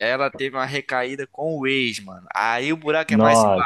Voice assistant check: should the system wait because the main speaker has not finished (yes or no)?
yes